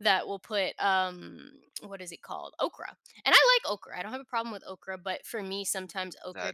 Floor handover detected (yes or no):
no